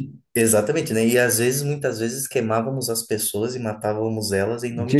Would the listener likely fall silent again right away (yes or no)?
no